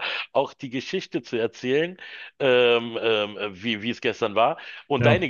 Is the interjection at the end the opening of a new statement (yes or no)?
no